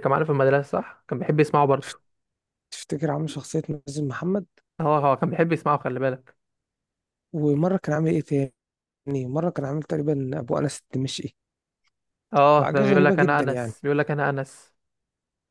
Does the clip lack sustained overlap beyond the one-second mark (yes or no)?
no